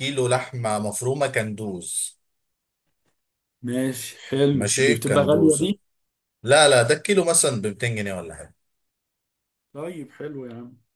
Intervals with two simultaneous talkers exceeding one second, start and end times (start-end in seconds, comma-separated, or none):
4.5-5.7